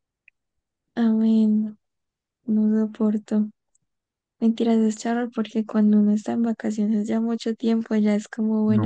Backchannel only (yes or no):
no